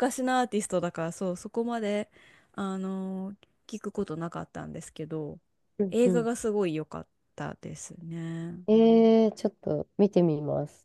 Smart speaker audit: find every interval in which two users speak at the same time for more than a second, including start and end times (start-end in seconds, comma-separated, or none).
none